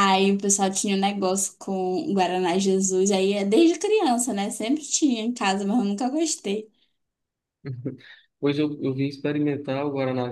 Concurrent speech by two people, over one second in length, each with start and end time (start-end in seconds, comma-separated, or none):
none